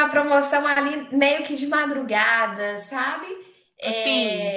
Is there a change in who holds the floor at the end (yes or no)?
no